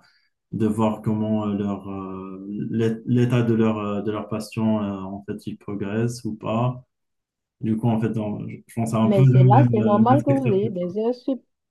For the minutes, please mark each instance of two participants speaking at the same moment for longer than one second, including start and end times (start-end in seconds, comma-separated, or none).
9.0-10.9